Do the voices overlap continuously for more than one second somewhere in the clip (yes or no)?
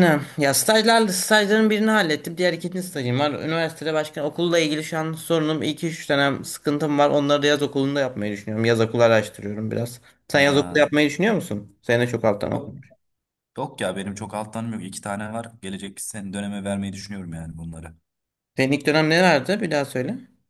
no